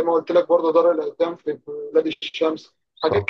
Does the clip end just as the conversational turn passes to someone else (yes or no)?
no